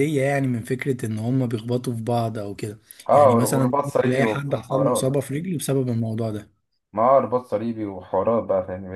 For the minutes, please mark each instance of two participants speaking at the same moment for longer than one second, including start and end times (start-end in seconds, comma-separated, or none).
3.1-5.1